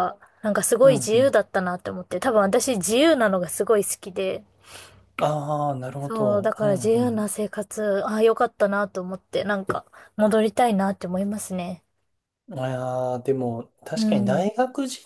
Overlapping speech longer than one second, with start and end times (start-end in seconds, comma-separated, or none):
6.0-7.3